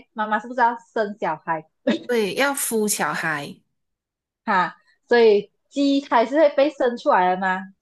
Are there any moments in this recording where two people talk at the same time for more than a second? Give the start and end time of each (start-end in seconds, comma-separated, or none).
none